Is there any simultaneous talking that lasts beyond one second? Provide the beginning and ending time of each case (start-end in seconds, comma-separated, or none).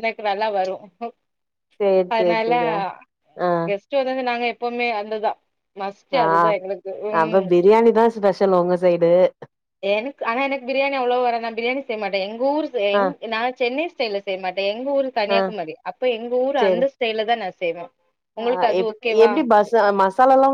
none